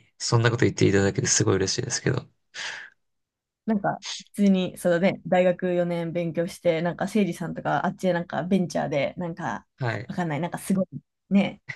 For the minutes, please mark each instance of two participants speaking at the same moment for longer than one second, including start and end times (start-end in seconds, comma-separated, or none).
none